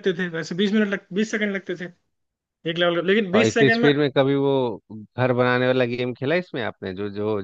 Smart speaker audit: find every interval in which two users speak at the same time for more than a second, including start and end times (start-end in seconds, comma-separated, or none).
none